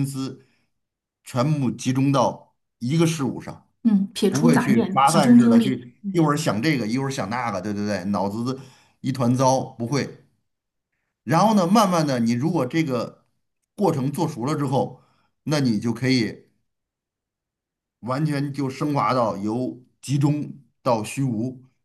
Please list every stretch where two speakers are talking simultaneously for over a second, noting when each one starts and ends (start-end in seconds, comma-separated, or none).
4.3-6.2